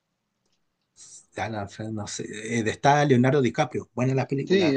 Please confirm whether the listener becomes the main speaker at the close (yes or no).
yes